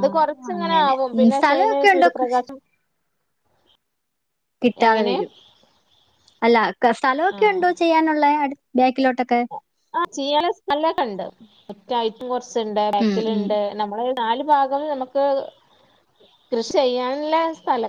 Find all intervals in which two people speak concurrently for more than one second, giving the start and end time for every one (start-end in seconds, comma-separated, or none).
0.6-2.5